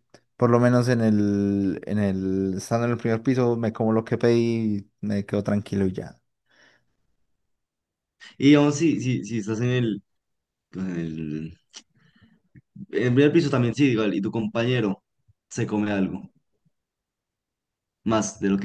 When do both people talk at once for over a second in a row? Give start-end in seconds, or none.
none